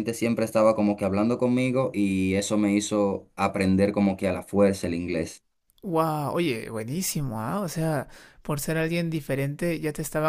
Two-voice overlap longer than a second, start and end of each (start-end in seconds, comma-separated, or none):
none